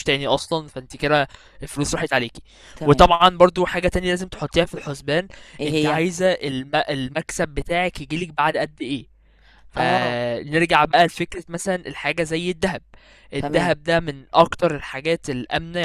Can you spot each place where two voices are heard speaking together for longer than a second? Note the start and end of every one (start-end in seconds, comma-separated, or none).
none